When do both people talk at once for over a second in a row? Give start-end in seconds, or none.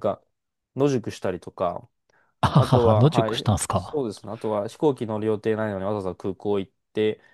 2.5-4.0